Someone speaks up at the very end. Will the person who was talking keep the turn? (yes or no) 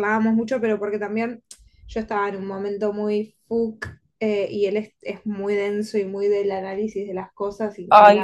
yes